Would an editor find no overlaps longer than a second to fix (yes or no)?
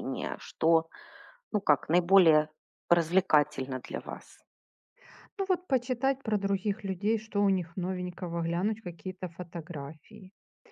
yes